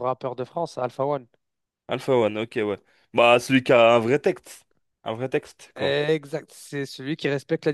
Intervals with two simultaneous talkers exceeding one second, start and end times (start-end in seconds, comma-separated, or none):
none